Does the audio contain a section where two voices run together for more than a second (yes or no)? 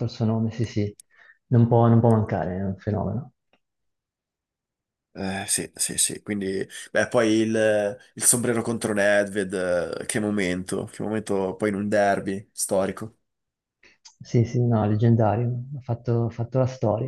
no